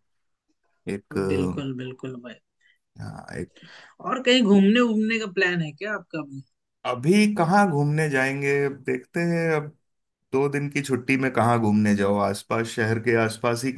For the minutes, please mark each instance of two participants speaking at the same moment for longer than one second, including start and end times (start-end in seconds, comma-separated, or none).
none